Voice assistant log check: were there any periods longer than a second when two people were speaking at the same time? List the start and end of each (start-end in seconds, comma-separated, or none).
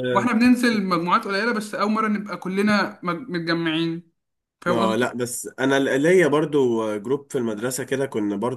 none